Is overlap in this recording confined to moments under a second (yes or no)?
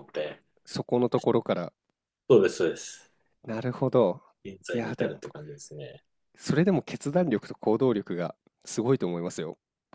yes